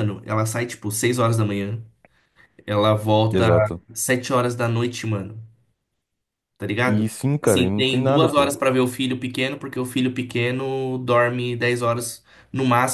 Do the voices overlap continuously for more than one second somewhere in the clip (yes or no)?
yes